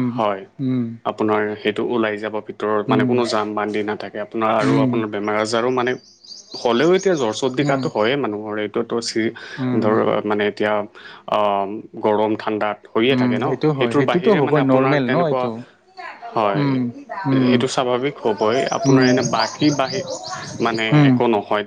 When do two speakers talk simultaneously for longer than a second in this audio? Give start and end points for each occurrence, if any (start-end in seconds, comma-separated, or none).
13.1-15.4